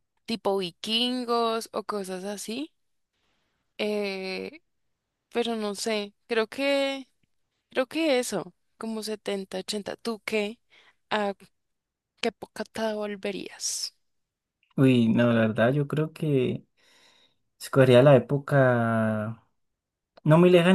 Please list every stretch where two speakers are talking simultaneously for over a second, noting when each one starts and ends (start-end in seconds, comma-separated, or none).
none